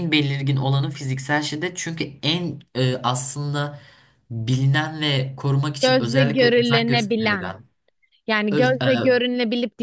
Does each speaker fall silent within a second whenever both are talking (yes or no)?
no